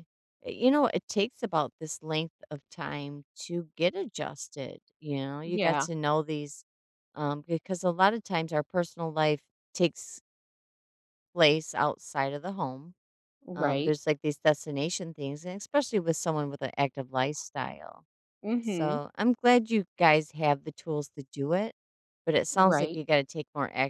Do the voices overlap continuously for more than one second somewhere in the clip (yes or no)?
no